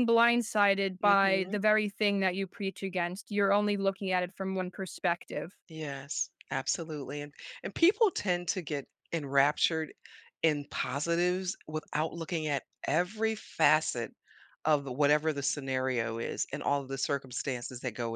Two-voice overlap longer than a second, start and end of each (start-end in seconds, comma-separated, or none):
none